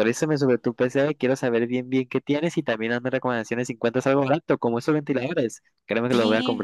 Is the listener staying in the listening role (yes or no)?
no